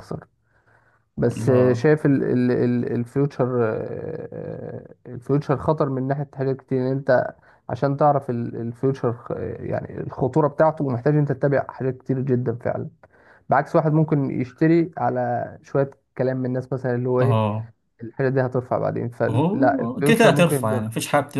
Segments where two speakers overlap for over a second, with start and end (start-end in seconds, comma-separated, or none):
19.3-20.8